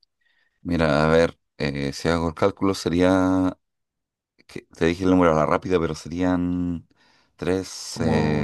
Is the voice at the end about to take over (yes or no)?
yes